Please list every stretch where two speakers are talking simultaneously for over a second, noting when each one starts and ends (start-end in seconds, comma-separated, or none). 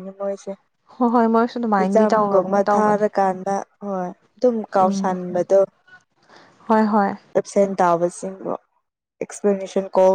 1.8-3.0